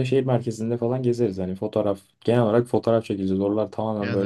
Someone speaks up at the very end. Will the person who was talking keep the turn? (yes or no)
yes